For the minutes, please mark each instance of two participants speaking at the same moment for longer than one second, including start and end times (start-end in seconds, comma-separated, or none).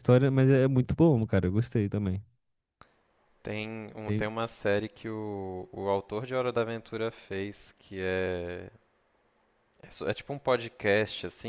none